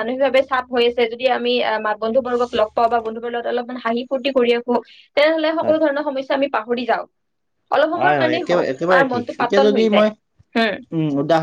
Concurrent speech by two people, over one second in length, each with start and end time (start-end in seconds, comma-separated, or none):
8.0-10.1